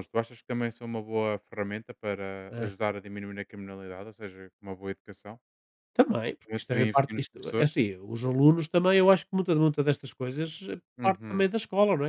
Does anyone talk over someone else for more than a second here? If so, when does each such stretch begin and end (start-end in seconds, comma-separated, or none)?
6.4-7.8